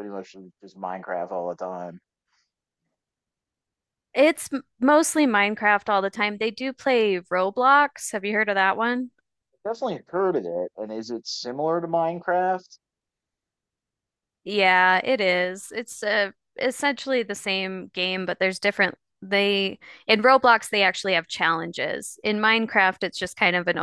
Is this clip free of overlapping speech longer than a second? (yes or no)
yes